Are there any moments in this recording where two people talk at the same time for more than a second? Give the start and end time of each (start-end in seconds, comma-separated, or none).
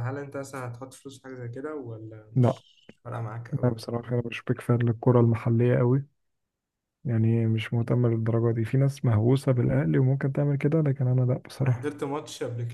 none